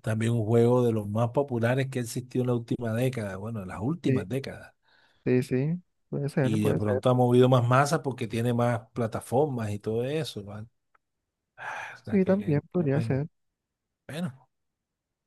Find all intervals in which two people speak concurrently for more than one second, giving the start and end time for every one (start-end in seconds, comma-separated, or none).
12.0-13.2